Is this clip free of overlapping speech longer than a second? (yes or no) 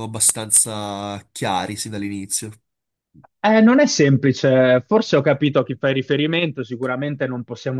yes